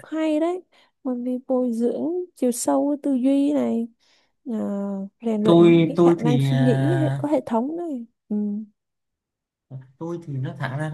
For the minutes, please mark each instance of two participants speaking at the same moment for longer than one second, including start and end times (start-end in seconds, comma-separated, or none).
5.4-7.2